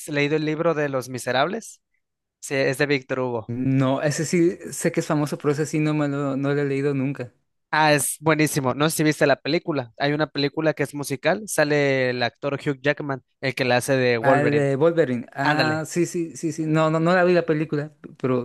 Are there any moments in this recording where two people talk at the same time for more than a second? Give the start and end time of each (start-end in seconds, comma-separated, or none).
none